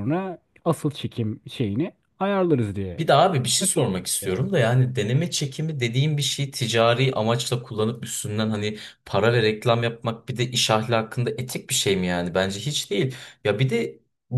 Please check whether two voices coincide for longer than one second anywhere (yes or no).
no